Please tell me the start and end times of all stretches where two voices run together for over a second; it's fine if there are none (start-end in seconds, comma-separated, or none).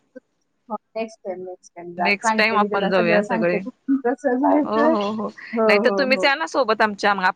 2.0-3.6